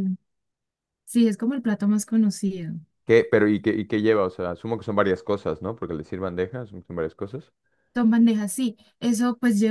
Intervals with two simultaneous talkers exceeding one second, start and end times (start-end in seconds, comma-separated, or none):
none